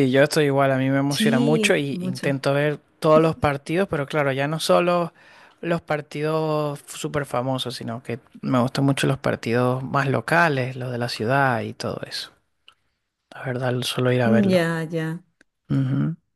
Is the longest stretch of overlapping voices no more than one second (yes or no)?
no